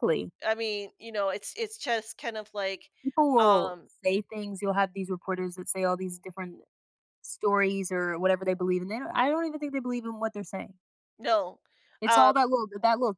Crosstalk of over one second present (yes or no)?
no